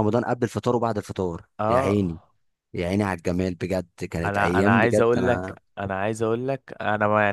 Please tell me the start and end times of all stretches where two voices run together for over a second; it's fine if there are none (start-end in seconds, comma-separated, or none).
4.2-5.6